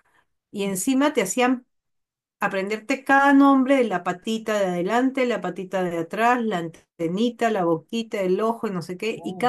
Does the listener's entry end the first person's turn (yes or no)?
no